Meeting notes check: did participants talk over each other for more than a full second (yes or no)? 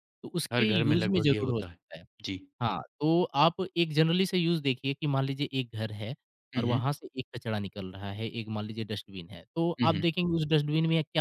yes